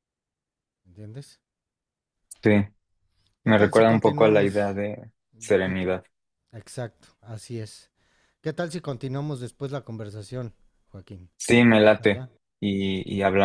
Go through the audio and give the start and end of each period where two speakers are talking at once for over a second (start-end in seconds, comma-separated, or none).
3.4-4.8